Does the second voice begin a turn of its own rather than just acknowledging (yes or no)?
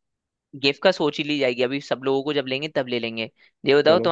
no